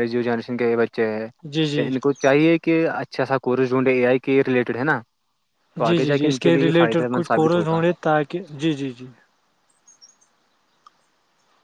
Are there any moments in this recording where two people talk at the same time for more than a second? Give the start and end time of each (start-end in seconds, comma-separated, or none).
5.8-7.8